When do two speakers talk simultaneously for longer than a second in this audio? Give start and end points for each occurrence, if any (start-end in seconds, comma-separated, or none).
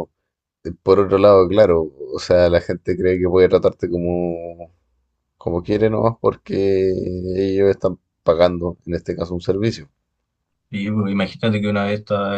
none